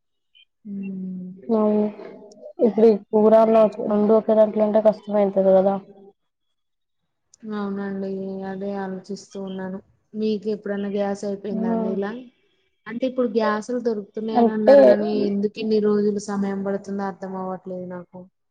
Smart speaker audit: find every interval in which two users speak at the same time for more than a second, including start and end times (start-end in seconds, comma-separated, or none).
none